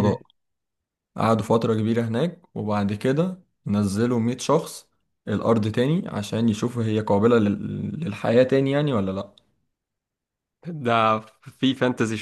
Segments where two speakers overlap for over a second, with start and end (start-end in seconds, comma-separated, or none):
none